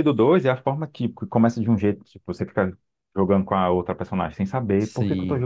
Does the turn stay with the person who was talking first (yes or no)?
yes